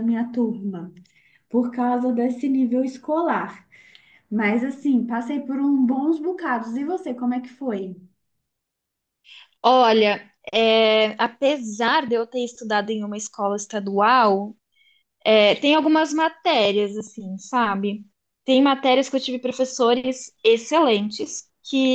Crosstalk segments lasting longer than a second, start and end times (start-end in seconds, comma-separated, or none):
none